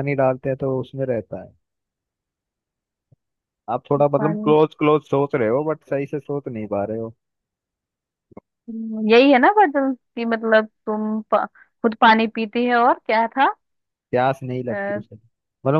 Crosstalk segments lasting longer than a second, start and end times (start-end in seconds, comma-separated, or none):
none